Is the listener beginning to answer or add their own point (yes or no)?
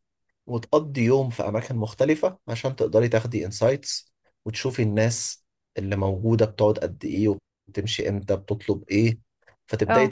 no